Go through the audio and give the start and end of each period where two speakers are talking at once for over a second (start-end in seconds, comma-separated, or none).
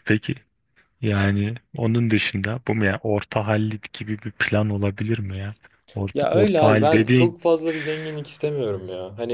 6.1-7.3